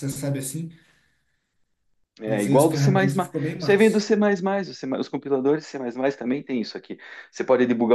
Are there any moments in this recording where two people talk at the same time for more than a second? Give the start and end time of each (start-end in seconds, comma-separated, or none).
2.3-4.1